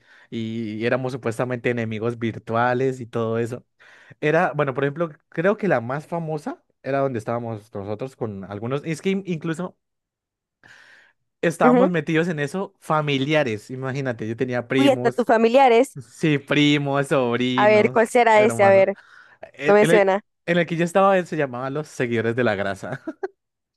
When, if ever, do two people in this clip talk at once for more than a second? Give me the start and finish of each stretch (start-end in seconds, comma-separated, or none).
17.6-18.9